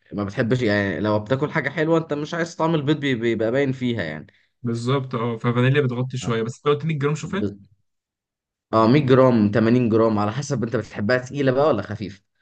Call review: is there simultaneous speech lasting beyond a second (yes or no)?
no